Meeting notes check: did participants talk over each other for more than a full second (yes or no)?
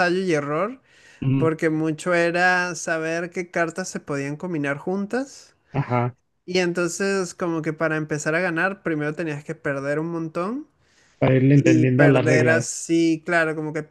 yes